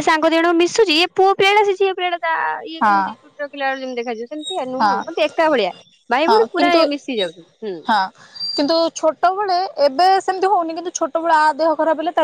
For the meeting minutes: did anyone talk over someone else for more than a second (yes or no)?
no